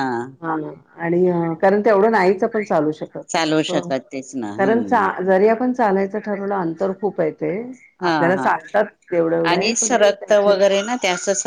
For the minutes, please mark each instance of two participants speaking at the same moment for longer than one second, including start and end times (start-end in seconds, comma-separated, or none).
none